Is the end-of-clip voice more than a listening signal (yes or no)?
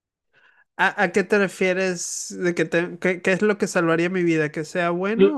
yes